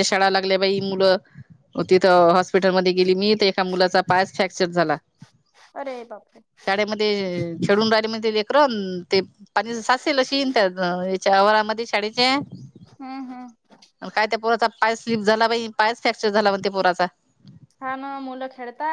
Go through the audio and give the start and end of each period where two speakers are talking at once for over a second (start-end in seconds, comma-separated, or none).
none